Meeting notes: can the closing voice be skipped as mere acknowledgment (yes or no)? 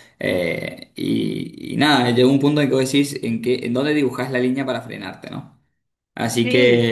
yes